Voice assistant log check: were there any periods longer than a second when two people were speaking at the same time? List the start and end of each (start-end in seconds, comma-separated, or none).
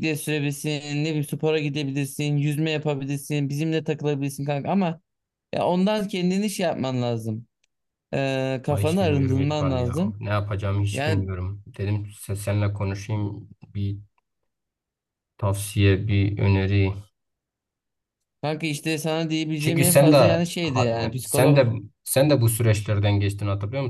8.7-10.2, 19.6-21.7